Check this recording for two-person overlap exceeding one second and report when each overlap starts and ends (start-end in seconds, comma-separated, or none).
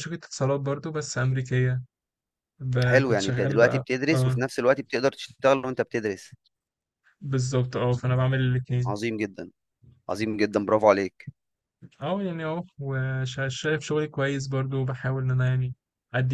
2.8-4.4